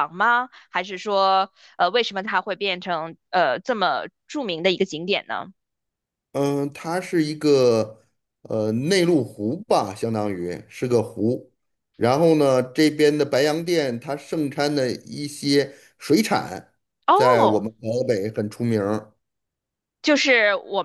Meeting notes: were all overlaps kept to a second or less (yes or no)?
yes